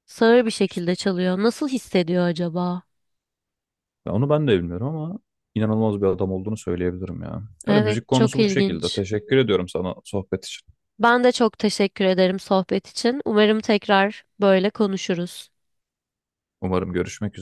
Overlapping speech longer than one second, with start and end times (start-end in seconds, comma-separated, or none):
7.7-9.0